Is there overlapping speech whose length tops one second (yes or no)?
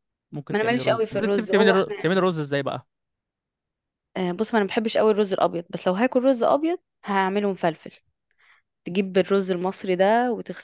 yes